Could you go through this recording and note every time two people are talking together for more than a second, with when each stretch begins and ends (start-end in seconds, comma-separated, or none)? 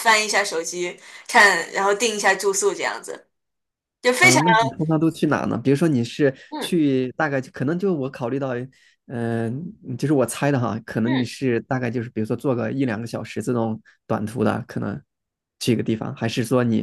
none